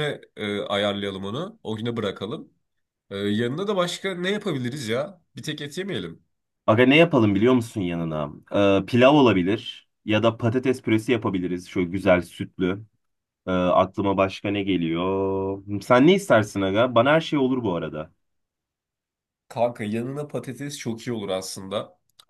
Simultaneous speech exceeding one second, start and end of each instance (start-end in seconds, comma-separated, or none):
none